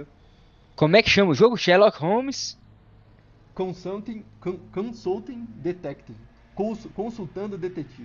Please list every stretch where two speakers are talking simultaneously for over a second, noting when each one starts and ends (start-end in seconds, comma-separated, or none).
none